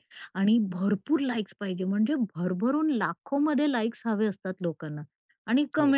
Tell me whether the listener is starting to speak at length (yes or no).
no